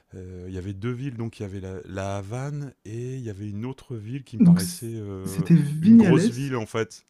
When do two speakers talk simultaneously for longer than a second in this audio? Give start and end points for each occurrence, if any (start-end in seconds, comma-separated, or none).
4.4-6.5